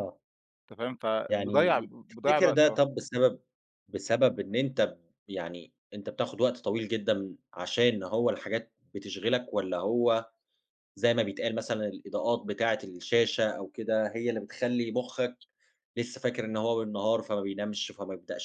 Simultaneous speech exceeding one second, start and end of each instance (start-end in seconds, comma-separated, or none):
1.3-2.8